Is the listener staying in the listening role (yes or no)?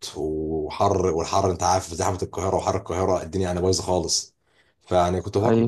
yes